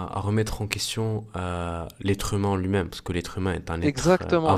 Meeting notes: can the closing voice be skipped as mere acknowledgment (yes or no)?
no